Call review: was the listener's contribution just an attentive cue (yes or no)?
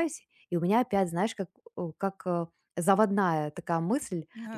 yes